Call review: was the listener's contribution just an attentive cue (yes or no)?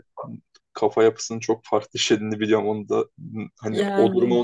yes